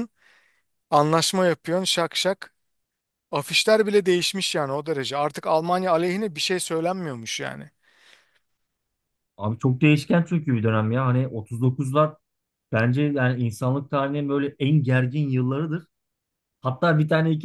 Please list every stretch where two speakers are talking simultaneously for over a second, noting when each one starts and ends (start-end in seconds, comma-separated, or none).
none